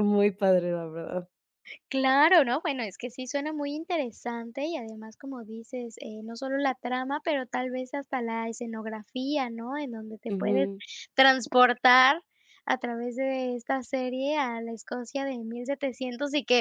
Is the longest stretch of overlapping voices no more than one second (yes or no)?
yes